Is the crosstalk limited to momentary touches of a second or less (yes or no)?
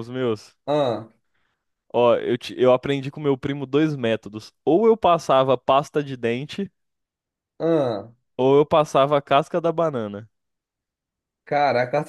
yes